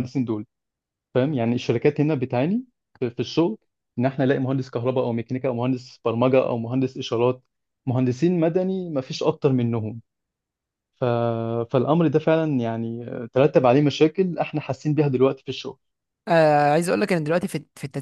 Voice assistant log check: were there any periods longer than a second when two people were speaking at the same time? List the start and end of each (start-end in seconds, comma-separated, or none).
none